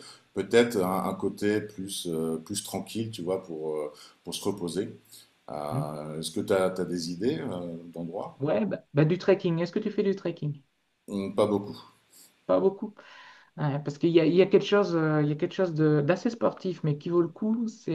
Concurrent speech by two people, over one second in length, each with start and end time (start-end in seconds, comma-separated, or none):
none